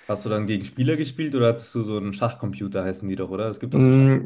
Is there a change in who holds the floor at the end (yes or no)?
yes